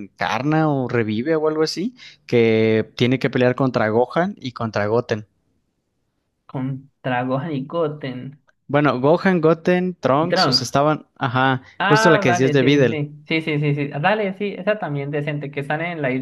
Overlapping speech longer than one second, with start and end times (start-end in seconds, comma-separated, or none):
11.8-13.0